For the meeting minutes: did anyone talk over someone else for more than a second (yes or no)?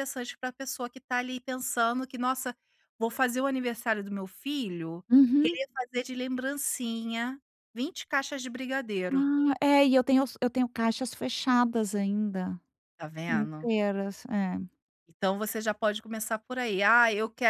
no